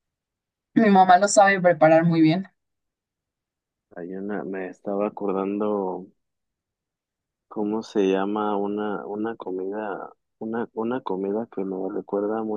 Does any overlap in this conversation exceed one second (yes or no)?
no